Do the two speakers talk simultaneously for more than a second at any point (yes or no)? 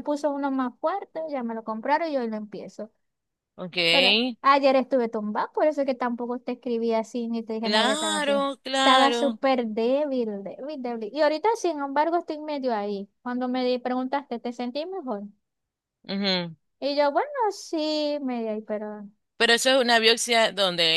yes